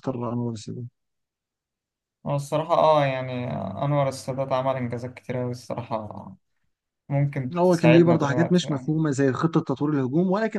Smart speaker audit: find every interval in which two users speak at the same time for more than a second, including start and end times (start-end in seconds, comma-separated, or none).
7.6-8.9